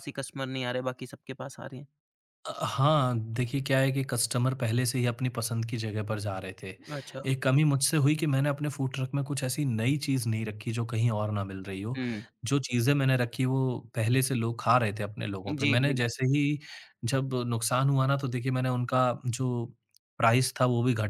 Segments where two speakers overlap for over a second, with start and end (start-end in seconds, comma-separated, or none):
none